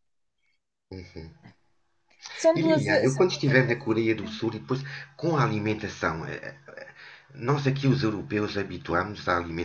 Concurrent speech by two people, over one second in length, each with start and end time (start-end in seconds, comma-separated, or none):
2.5-4.5